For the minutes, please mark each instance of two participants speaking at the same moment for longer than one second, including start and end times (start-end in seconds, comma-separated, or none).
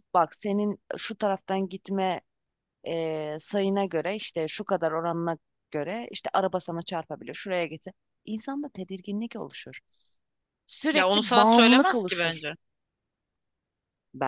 10.9-12.4